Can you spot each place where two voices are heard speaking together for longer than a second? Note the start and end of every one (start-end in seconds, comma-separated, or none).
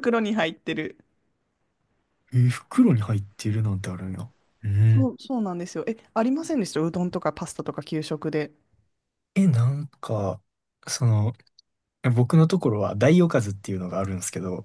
none